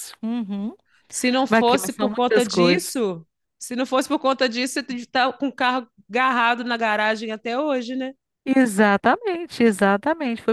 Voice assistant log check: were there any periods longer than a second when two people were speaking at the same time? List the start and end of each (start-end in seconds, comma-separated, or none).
1.5-3.0